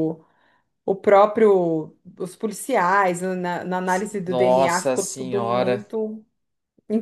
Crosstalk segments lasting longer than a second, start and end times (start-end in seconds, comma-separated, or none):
4.2-5.9